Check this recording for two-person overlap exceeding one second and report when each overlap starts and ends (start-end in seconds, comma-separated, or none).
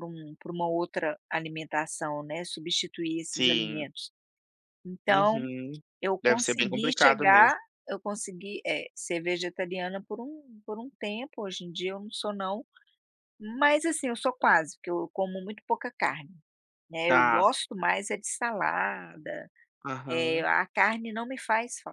6.2-7.6